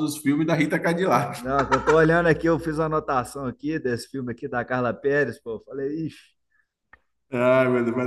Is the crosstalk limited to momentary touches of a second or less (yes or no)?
yes